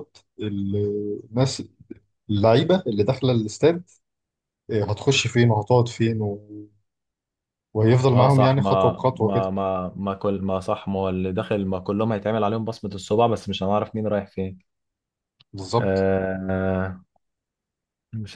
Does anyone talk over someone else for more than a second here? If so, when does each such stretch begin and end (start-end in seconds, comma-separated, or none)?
8.1-9.5